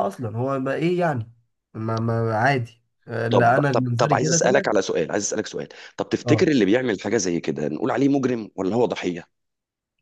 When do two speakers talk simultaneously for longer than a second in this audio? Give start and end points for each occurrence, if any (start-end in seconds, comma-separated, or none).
3.3-4.7